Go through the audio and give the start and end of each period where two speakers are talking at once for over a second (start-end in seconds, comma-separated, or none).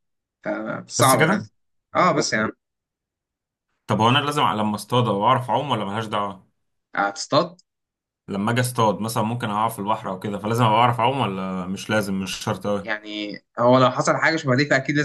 none